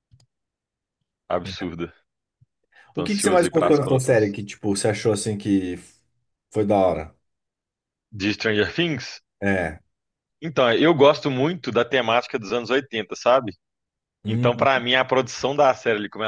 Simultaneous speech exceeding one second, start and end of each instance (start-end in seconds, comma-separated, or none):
2.9-4.3